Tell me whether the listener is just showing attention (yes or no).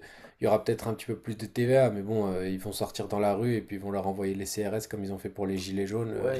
no